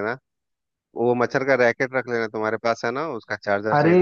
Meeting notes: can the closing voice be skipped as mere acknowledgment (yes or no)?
no